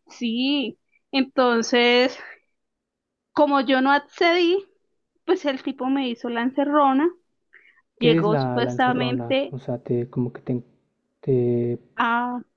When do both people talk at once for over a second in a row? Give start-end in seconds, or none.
8.0-9.6